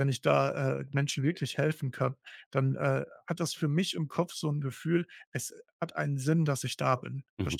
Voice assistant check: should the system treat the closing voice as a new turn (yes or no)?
yes